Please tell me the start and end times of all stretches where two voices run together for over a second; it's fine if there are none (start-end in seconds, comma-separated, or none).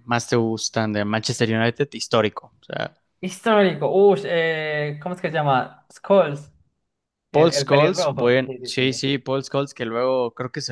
7.3-9.1